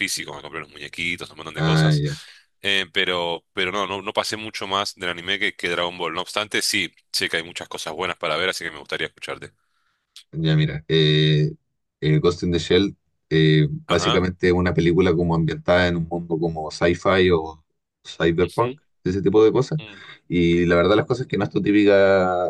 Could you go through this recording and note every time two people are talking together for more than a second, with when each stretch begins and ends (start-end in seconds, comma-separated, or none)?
none